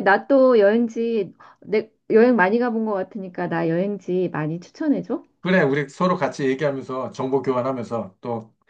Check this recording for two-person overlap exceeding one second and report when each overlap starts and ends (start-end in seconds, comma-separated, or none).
none